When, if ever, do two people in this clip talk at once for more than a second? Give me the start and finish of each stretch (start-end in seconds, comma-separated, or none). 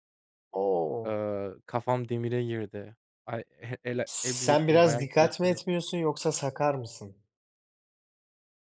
4.1-5.6